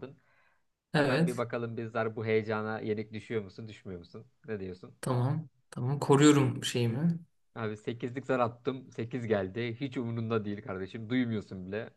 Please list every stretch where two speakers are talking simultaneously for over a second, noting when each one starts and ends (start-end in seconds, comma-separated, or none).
none